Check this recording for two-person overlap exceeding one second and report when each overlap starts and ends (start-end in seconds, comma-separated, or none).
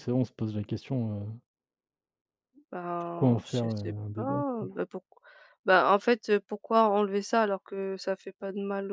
3.0-4.7